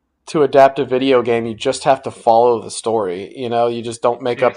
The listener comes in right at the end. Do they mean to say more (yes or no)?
no